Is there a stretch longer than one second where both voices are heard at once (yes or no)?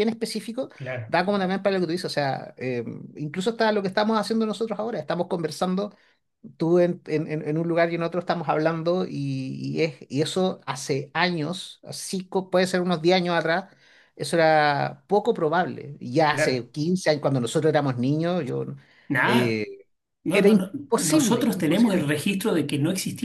yes